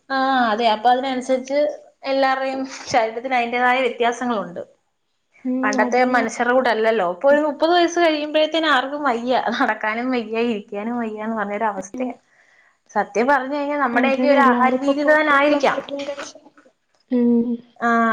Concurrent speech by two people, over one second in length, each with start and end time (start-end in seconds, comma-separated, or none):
14.0-15.8